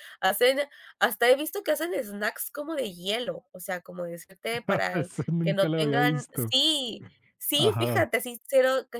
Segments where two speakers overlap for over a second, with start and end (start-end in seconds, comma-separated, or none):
4.9-6.5